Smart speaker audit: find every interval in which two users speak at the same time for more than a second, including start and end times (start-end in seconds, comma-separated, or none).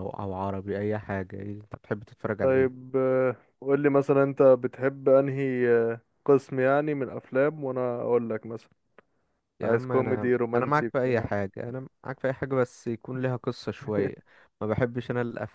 9.6-11.3